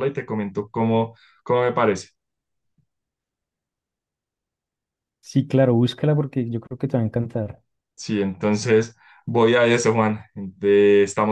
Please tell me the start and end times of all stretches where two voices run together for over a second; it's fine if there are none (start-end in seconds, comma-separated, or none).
none